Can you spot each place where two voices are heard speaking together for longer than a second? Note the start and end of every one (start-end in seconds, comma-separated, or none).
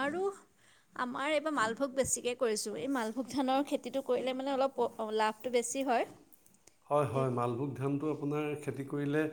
none